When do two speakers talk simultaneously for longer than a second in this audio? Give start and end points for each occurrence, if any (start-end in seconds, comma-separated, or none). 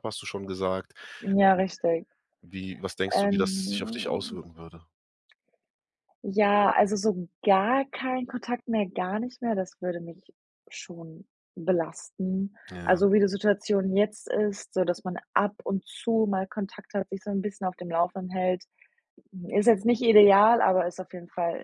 3.1-4.4